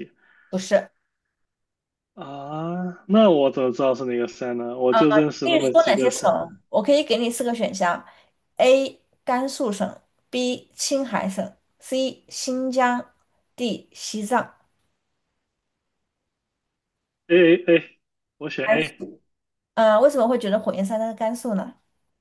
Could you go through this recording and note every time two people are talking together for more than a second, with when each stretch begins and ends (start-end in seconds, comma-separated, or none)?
5.2-6.5